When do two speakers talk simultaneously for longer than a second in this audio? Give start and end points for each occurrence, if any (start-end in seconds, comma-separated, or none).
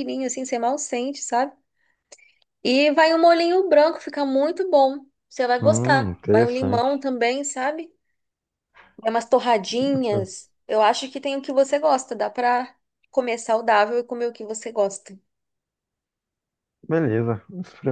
5.6-7.0